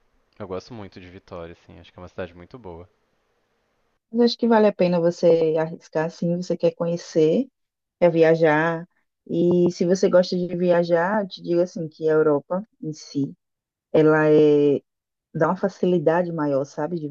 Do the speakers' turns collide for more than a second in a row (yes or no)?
no